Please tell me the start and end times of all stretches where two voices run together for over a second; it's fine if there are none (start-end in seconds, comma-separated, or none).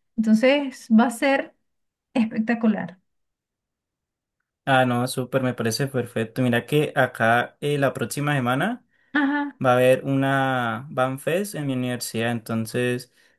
none